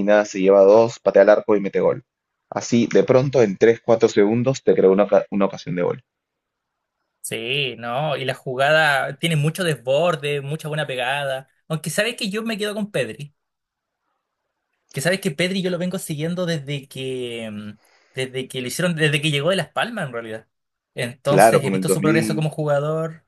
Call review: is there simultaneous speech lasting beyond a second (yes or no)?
yes